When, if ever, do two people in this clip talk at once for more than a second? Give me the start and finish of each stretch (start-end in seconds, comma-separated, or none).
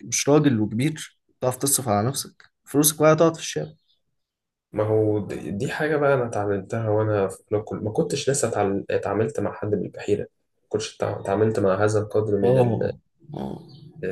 none